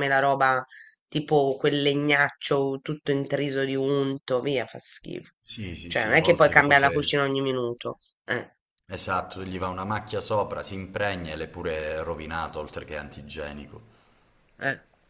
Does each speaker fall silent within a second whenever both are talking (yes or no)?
no